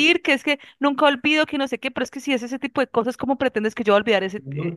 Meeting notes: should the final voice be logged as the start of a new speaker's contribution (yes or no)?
yes